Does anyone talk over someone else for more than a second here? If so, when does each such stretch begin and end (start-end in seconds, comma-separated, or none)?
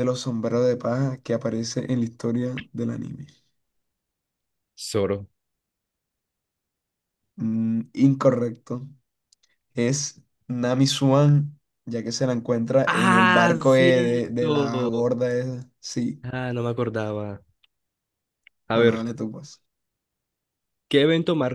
12.8-15.1